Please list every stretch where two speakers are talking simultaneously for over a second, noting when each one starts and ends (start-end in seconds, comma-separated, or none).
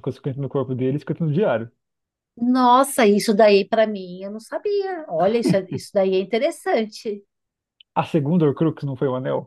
none